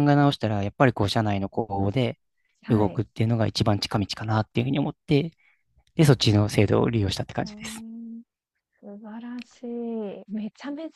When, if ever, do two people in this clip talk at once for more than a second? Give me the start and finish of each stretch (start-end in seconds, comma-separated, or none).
none